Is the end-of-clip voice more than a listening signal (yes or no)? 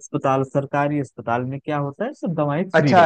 yes